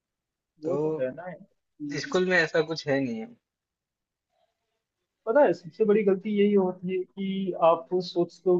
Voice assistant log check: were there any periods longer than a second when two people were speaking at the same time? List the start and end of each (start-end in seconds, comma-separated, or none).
none